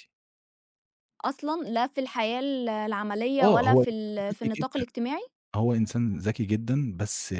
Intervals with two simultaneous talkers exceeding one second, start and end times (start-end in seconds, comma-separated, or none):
3.4-4.8